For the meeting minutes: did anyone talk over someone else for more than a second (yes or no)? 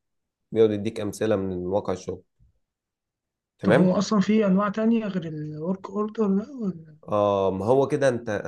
no